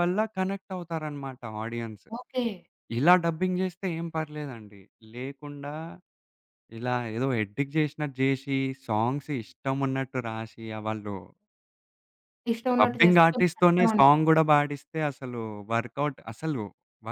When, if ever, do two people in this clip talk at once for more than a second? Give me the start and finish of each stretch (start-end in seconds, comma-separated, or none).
12.8-14.3